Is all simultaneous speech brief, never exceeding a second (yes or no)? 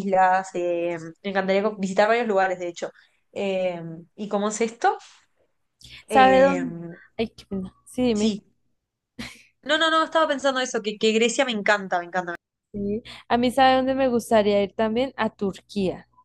yes